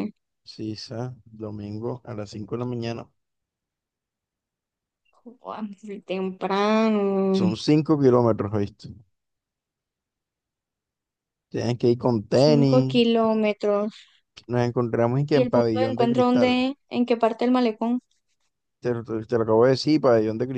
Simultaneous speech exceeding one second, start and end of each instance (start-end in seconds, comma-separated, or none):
15.3-16.6